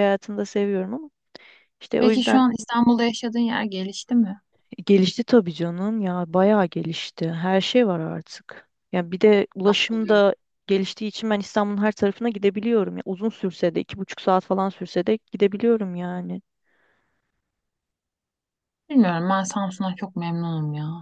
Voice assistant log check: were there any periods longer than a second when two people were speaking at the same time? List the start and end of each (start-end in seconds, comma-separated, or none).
none